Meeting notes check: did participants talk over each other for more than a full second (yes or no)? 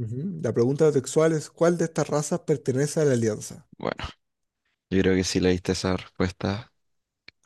no